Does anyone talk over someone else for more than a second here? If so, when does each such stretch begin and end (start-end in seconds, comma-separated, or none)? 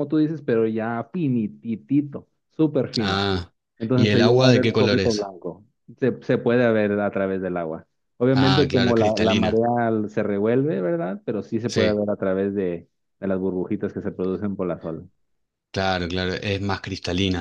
4.0-5.3, 8.3-9.6